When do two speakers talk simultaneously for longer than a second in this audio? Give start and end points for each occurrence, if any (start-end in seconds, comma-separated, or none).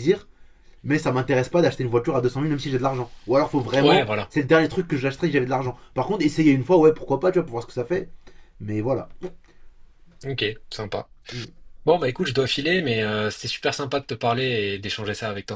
none